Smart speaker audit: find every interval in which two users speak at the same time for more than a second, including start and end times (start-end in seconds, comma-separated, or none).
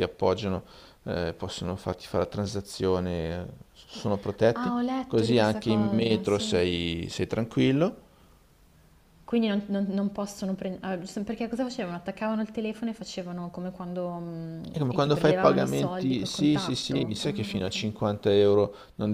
4.5-6.6, 14.7-17.7